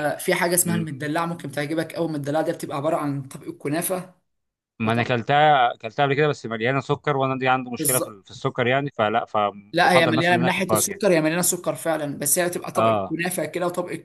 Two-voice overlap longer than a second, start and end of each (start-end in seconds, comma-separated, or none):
9.7-11.0